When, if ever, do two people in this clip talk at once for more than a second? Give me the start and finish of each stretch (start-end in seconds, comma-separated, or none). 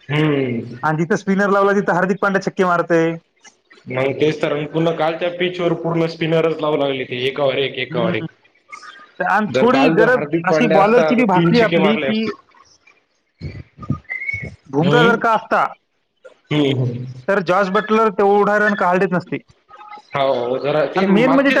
9.6-12.2